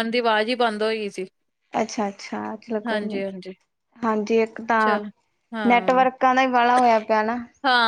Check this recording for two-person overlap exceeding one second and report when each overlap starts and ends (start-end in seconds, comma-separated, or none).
none